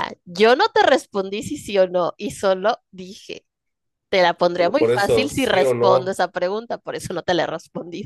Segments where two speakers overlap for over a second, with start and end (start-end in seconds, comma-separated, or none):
4.6-6.2